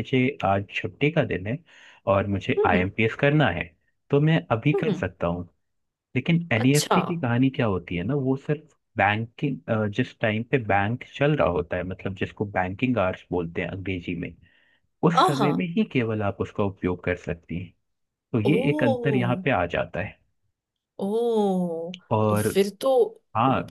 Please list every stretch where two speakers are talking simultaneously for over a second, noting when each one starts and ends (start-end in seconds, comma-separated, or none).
none